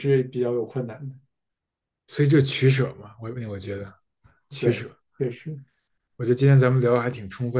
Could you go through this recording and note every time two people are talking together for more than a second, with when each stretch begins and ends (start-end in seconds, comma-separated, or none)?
none